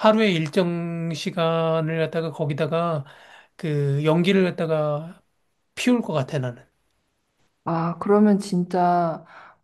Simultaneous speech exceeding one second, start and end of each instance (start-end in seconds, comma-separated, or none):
none